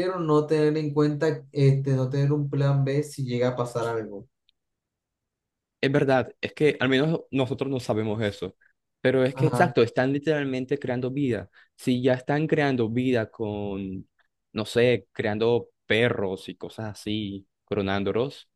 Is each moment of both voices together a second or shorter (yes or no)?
yes